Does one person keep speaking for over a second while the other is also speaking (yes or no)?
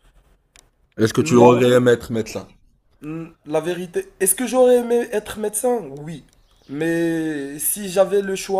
no